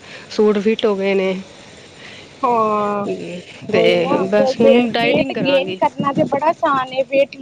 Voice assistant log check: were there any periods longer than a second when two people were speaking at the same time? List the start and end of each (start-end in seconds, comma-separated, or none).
3.8-5.8